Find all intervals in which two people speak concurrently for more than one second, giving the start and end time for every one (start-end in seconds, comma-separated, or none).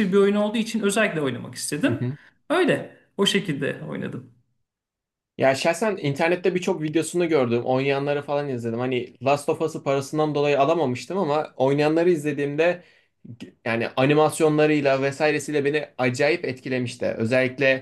none